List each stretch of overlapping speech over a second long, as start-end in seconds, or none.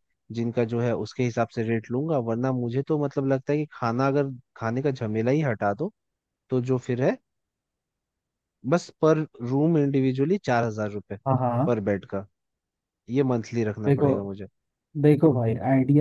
none